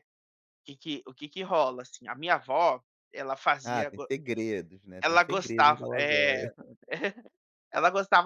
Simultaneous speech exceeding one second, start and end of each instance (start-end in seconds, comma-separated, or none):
5.0-6.5